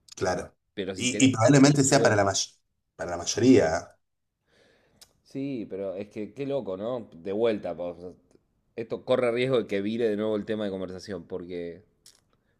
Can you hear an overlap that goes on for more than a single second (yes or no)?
yes